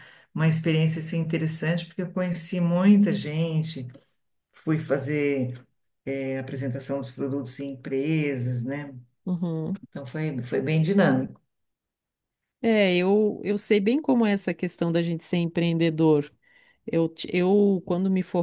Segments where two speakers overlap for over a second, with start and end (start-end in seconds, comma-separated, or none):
none